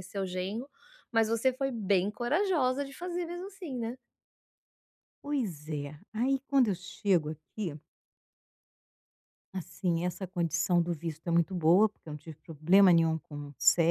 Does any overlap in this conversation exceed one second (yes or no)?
no